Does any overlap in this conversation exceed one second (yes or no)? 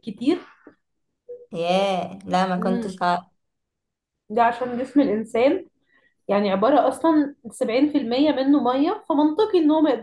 no